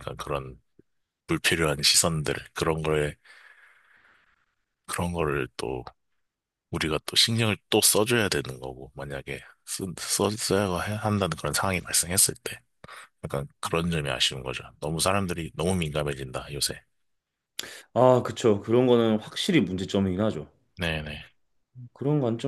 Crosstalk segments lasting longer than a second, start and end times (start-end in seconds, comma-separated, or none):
none